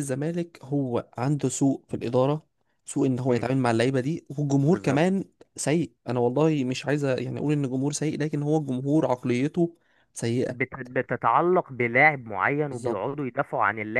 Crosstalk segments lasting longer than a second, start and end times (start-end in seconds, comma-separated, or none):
none